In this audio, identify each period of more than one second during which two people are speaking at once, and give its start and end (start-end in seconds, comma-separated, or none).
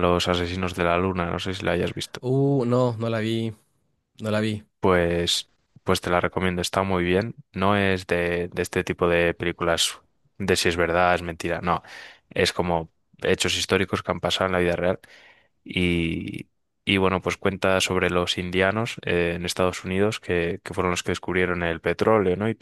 none